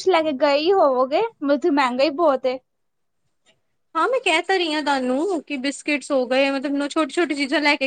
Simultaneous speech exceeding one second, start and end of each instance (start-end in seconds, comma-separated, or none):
none